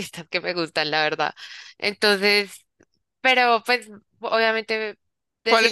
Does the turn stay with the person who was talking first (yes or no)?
no